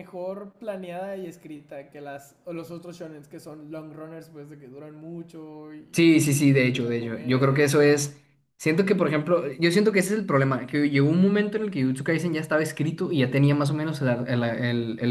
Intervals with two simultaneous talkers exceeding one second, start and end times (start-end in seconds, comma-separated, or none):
6.4-8.1